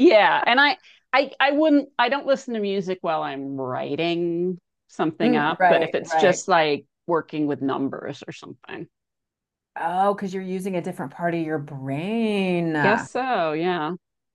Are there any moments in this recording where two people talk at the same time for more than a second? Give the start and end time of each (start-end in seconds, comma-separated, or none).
5.2-6.4